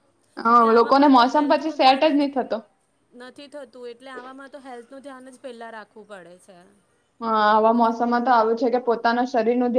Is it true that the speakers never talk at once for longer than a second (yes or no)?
no